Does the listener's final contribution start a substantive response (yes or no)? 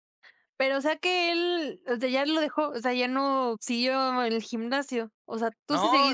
yes